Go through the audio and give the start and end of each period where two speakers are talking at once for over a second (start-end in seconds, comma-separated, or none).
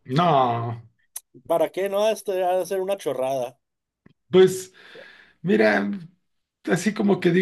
none